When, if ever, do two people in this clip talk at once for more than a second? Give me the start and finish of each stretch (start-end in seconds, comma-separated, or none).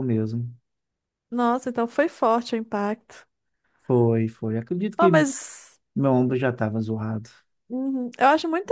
none